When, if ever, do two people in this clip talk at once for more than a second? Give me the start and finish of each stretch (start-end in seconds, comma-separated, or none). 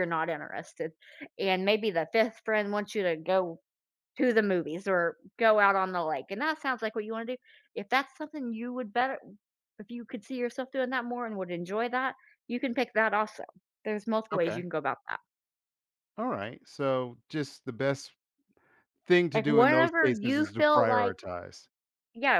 19.3-21.2